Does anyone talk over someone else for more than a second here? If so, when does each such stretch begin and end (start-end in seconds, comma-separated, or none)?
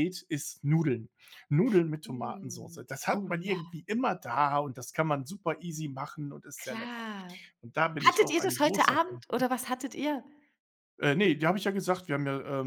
2.0-3.8, 8.1-9.4